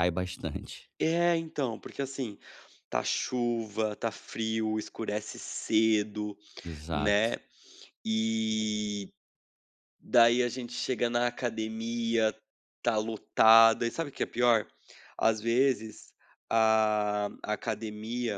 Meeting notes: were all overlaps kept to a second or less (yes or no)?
yes